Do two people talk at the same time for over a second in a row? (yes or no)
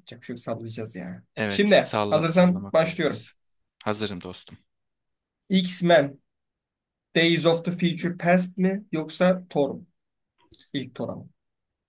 yes